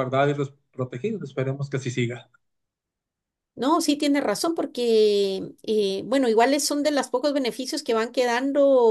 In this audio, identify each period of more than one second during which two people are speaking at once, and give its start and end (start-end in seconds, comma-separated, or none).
none